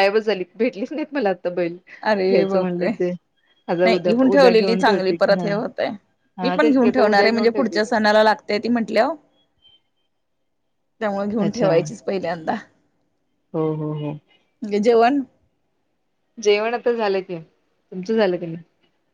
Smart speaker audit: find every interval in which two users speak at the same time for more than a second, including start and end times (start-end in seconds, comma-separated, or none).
3.8-5.5, 6.4-7.9